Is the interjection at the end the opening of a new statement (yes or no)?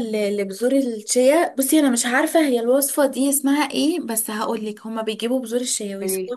no